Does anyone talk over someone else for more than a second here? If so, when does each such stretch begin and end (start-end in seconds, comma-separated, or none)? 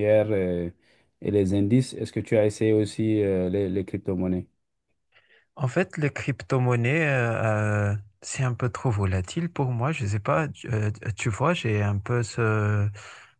none